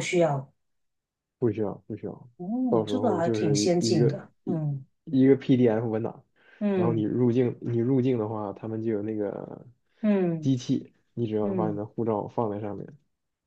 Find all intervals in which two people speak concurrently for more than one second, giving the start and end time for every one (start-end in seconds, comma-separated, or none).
2.7-4.6